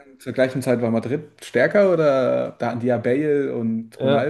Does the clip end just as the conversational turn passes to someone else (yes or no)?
yes